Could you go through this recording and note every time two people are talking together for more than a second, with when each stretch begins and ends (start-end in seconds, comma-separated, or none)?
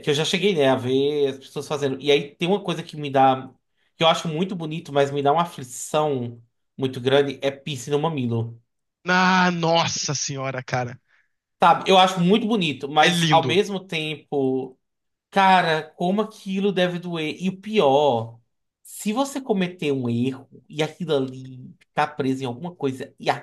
none